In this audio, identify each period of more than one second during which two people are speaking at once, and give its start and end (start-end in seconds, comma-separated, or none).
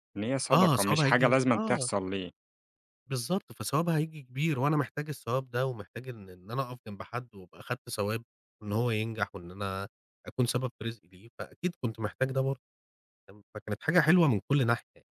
0.5-1.9